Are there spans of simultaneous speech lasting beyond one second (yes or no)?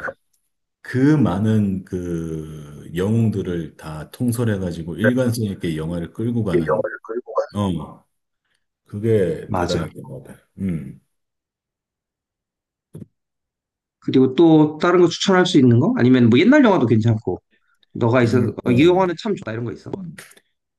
no